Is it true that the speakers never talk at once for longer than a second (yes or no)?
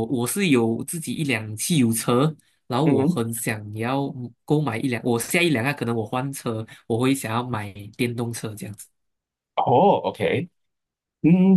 yes